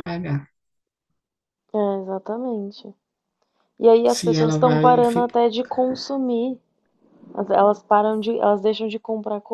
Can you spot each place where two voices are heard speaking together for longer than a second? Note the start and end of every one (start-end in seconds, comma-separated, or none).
4.0-5.4